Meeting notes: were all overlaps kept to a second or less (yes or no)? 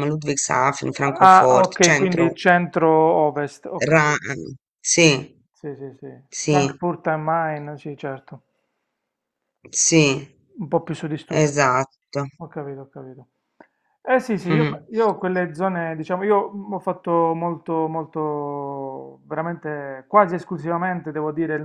no